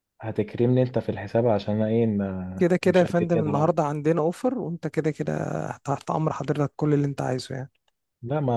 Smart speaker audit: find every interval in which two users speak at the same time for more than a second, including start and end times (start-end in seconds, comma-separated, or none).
2.6-3.8